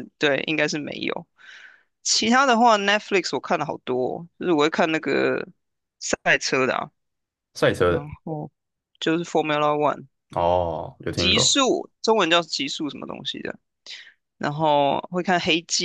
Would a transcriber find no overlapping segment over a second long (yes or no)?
yes